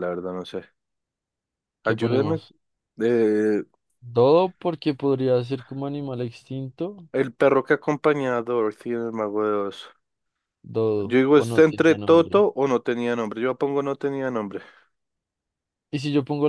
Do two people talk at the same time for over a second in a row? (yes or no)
yes